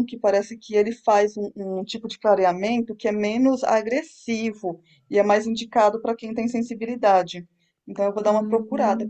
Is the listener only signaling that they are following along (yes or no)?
no